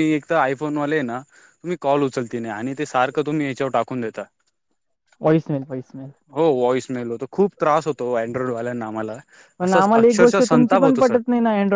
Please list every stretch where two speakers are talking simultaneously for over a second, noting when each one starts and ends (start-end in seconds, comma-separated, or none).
9.6-11.2